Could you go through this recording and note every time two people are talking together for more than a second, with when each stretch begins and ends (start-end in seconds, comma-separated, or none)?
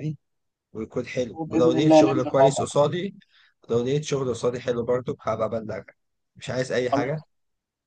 1.3-2.8